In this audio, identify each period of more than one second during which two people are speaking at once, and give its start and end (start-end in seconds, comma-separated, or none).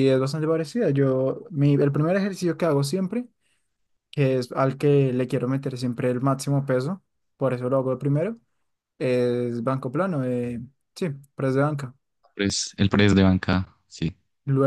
none